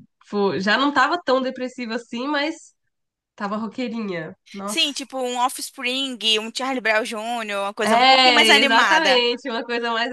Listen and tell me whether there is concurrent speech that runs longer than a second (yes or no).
yes